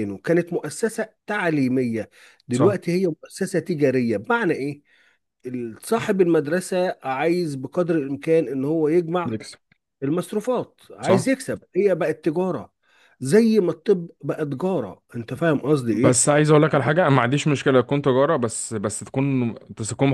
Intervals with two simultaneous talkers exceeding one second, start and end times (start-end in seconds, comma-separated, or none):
none